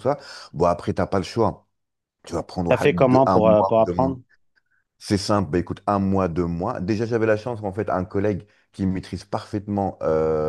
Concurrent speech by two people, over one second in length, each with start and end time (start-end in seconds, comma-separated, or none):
2.7-4.1